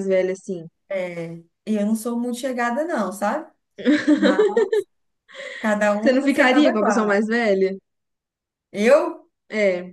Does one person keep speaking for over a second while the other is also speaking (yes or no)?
yes